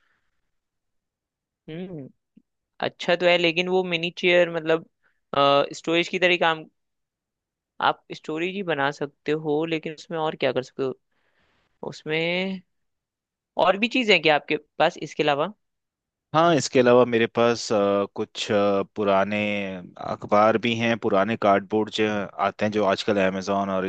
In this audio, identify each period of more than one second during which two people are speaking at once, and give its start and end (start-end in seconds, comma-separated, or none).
none